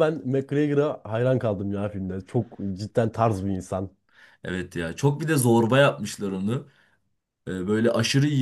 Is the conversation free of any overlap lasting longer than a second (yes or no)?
yes